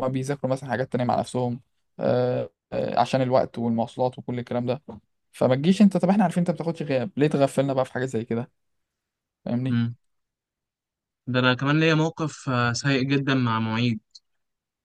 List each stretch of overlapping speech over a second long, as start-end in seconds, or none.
none